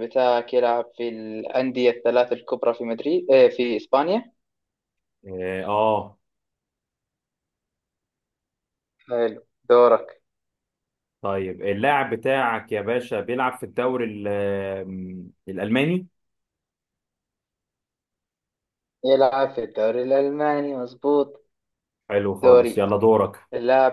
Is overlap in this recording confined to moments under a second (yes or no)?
yes